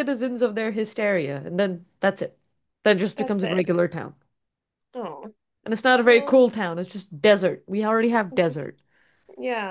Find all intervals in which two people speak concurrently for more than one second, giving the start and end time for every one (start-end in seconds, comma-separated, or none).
none